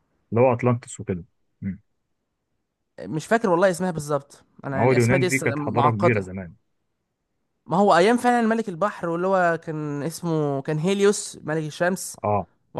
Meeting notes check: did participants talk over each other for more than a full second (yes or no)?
yes